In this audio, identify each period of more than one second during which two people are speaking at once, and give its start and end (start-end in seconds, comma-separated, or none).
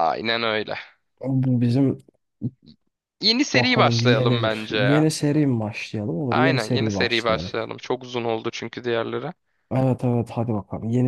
3.5-5.1, 6.3-7.5